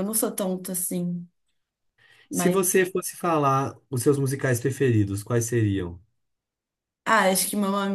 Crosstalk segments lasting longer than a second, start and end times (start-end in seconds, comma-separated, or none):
none